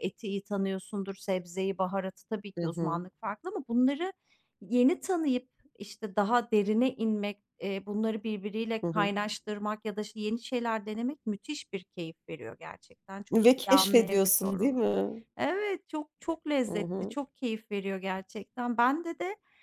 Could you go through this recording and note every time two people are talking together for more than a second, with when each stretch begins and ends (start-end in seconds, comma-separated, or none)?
13.3-14.8